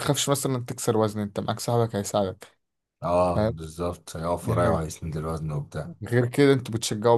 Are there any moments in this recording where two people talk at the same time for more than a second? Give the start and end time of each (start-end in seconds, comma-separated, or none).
none